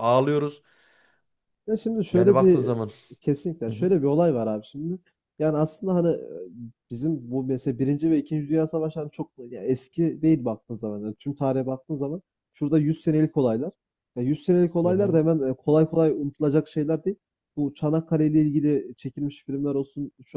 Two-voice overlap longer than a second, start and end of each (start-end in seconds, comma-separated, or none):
none